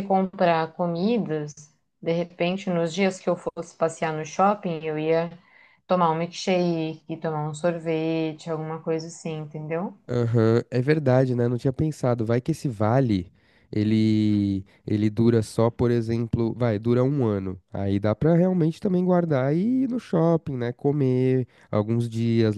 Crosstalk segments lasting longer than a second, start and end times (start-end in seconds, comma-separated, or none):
none